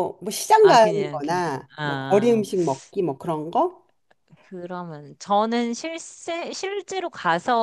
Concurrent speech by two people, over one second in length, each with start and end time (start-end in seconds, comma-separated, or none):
0.6-2.5